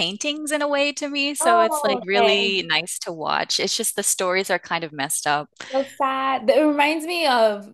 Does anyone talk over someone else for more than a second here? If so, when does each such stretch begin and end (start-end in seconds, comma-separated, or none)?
1.4-2.6